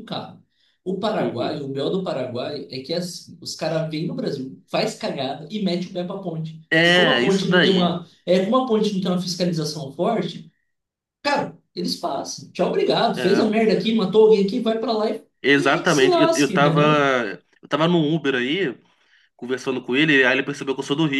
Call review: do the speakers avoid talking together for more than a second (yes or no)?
no